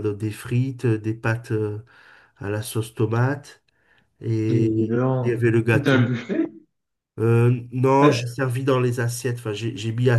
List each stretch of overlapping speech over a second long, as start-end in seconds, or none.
4.5-6.0